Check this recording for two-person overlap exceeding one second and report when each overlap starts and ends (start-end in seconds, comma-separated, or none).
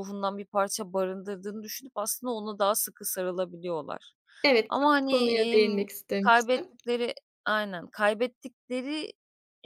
4.7-6.7